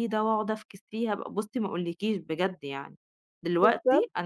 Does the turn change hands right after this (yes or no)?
no